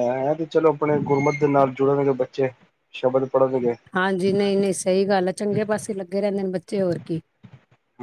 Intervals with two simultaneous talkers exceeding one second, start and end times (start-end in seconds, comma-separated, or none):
none